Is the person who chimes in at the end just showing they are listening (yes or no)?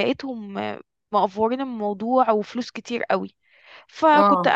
yes